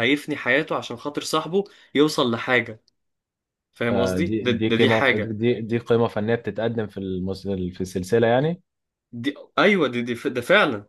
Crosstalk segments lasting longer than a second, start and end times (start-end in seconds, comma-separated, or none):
3.9-5.4